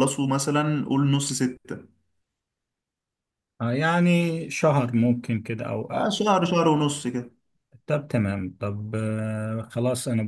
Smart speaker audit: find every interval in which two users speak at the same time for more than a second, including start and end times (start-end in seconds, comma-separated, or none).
none